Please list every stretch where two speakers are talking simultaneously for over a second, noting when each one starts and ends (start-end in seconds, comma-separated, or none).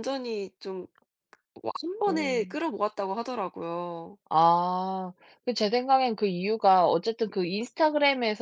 none